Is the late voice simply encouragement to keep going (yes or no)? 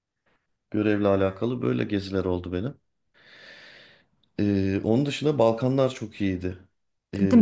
no